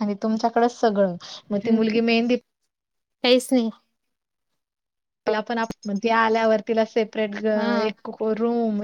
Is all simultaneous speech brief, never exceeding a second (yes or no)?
yes